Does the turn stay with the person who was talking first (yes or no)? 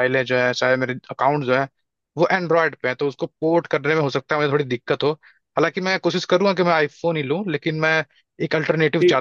no